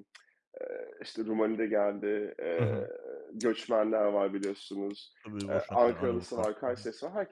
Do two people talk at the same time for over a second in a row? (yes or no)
yes